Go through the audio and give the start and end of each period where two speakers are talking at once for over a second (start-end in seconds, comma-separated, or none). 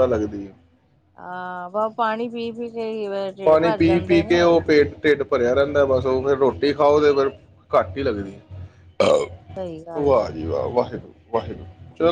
none